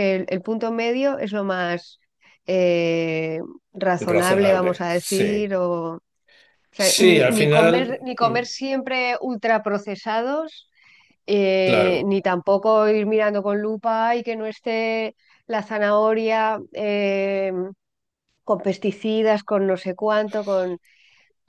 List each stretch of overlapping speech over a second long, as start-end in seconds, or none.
4.1-5.5, 6.8-8.3